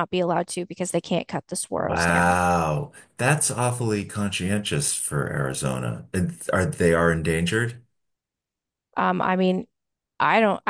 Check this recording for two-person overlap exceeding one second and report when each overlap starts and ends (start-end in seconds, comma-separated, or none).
none